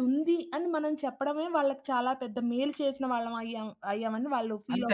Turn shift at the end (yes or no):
yes